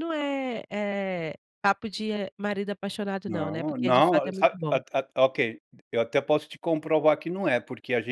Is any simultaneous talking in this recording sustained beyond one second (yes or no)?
yes